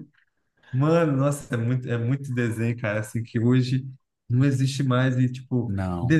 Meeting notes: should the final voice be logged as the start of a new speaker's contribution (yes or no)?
no